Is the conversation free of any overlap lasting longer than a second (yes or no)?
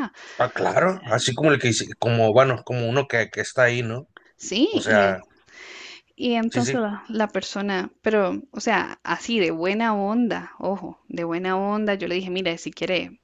yes